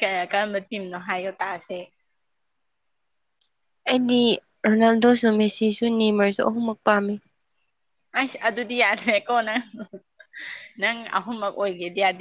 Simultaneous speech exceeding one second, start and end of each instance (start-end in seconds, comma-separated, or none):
none